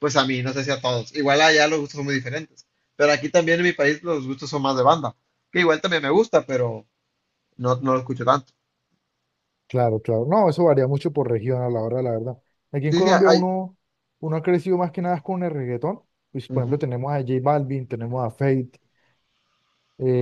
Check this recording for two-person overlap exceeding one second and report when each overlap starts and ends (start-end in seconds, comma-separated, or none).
none